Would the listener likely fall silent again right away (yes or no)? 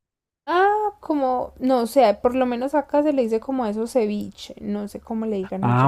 no